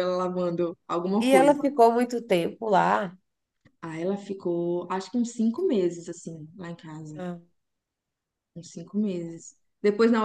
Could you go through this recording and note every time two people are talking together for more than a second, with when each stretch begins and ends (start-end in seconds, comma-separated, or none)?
none